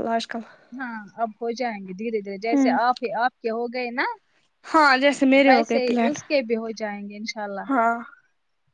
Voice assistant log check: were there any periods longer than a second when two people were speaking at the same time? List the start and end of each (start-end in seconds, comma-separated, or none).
none